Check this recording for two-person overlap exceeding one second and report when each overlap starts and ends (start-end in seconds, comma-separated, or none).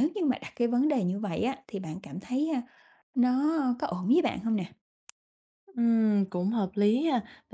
none